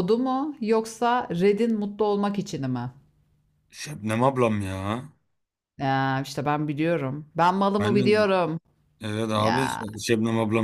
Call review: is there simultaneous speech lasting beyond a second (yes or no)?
no